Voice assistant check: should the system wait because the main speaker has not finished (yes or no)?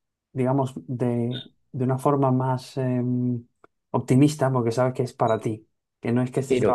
yes